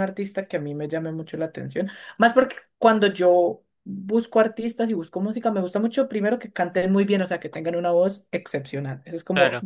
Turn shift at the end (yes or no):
no